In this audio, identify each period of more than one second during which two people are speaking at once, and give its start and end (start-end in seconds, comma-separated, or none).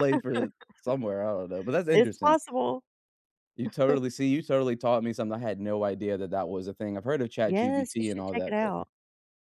7.5-8.7